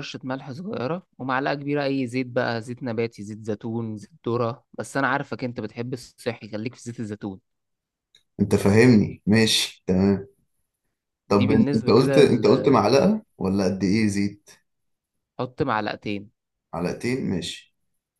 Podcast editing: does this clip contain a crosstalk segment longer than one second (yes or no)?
yes